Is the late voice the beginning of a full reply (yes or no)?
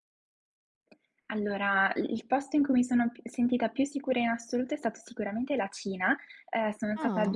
no